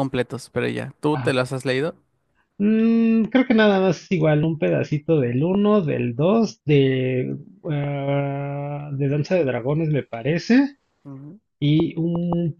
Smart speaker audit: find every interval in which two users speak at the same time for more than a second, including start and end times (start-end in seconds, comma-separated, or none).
none